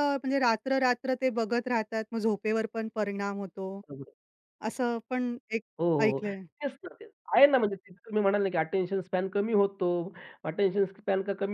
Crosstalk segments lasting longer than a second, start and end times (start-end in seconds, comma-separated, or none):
none